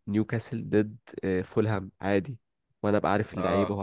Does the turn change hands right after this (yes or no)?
yes